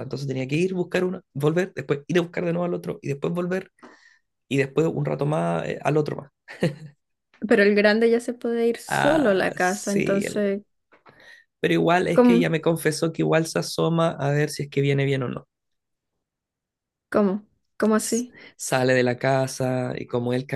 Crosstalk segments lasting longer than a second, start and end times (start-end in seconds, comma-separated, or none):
8.9-10.4